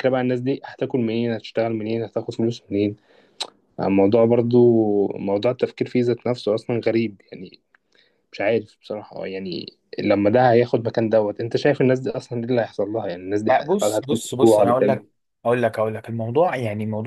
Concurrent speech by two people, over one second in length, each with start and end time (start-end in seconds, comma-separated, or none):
13.5-15.0